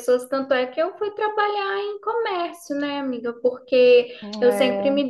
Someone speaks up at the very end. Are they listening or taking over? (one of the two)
listening